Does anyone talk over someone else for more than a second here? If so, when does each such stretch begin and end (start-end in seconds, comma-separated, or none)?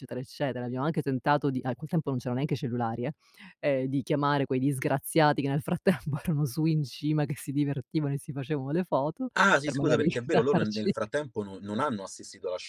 9.3-10.9